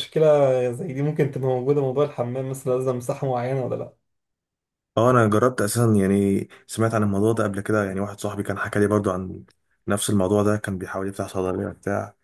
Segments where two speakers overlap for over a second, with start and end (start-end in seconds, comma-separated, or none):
none